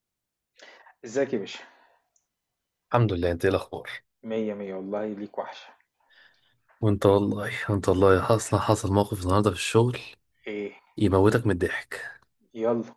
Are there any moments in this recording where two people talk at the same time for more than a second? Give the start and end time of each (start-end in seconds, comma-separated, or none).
none